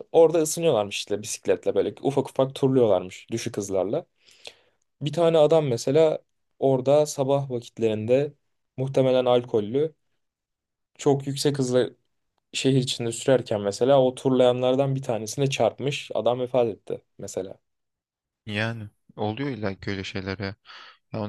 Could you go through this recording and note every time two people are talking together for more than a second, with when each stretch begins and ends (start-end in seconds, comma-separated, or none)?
none